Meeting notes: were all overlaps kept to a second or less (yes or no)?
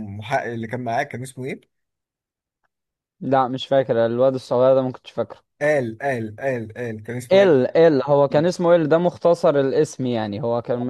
yes